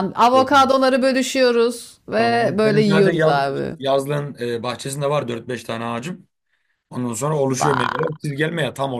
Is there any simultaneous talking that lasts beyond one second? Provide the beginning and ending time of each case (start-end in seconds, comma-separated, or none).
2.2-3.4